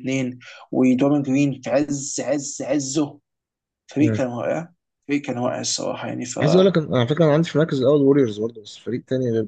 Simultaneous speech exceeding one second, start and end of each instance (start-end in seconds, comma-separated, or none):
none